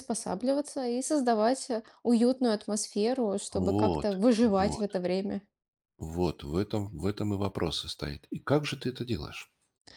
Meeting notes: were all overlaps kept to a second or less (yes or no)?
no